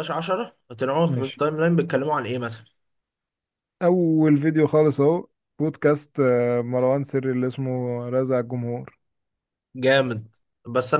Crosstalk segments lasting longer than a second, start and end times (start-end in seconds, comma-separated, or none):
none